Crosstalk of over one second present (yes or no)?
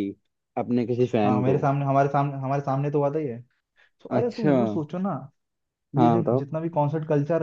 no